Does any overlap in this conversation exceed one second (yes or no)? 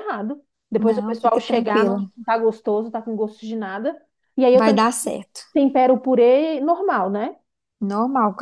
yes